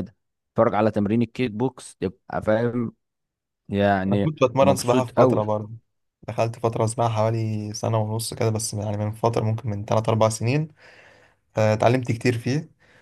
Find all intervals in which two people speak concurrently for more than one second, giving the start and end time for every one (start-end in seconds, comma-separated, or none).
4.1-5.4